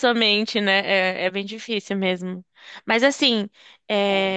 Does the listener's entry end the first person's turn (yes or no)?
no